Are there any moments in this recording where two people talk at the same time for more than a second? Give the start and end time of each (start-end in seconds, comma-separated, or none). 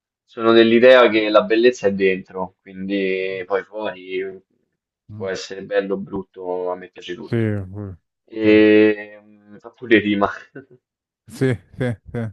none